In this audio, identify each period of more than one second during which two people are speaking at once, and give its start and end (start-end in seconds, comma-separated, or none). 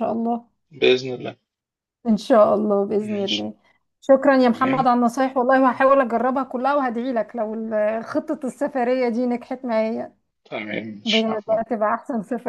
none